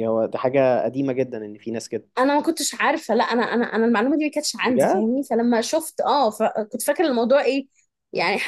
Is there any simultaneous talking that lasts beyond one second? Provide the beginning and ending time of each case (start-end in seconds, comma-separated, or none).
none